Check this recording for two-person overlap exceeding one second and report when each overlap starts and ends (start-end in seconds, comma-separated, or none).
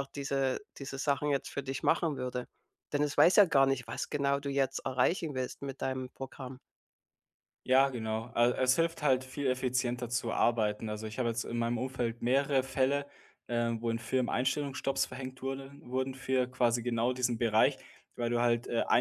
none